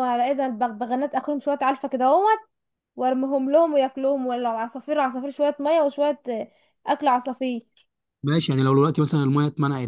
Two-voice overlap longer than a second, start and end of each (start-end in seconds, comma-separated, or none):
none